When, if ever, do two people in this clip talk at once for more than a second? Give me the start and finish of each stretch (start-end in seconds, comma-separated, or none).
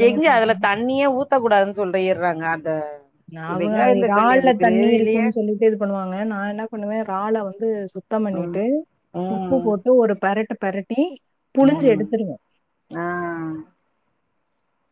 3.6-5.3